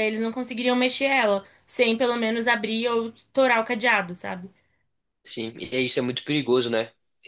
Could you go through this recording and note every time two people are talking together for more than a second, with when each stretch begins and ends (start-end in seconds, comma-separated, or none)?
none